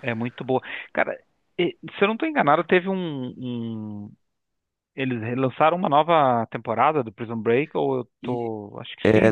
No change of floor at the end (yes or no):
no